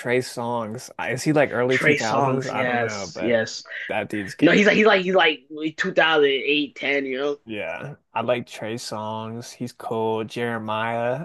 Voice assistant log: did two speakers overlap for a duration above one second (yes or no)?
yes